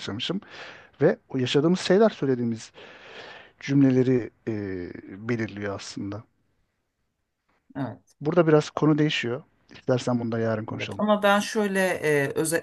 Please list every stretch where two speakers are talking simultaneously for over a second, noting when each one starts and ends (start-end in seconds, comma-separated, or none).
none